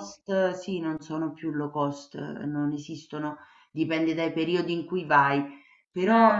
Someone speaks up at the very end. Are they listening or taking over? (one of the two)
listening